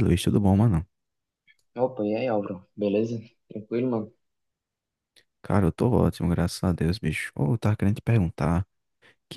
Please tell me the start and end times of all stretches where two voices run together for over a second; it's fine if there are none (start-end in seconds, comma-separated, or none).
none